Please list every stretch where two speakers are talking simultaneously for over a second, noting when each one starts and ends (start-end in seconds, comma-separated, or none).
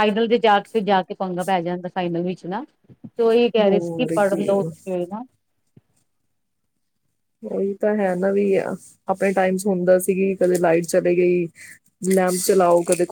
none